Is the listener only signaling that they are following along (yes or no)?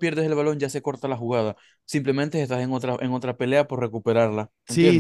no